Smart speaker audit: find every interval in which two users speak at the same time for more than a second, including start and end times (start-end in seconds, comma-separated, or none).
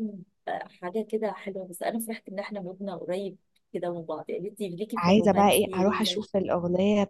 5.0-6.2